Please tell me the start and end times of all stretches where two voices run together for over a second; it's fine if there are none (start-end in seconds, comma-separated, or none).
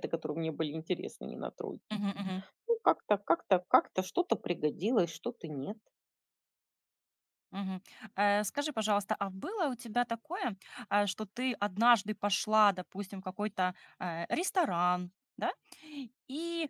none